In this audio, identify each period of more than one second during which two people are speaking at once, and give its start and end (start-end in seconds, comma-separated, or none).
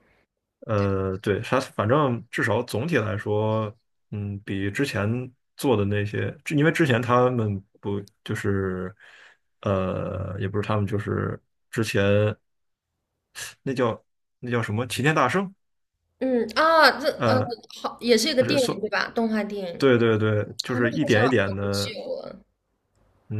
20.6-22.0